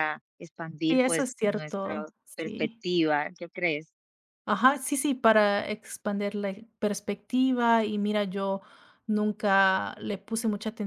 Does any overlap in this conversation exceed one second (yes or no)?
yes